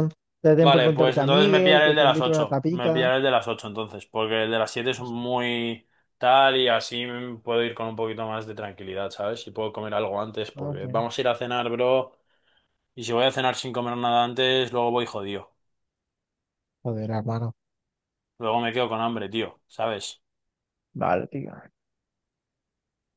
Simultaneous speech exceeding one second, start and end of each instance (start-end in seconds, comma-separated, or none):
0.6-3.1